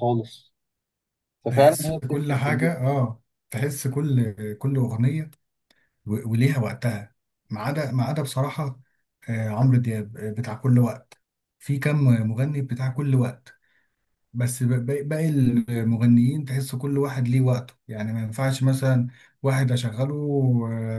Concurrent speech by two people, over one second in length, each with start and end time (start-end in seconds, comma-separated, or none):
1.5-2.7